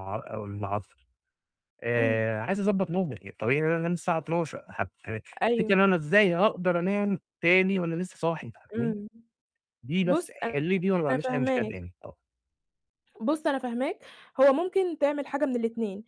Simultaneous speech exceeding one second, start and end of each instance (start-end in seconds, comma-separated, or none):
10.0-11.8